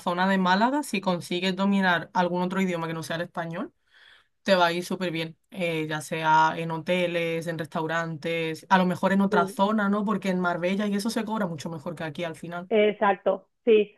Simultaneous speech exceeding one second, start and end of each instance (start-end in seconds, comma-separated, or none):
none